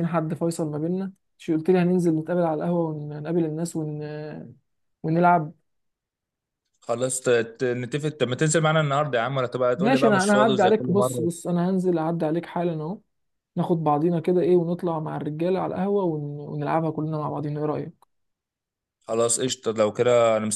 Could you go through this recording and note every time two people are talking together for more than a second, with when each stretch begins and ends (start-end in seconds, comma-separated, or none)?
9.8-11.3